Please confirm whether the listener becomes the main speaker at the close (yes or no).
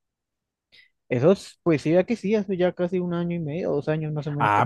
yes